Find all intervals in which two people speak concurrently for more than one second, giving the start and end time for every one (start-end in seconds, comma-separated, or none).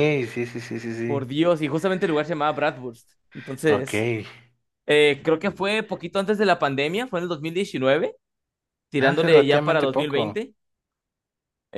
9.0-10.4